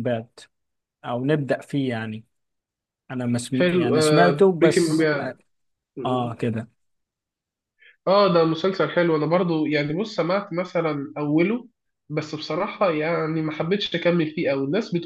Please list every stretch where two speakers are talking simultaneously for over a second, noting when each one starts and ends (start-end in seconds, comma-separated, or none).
3.5-5.3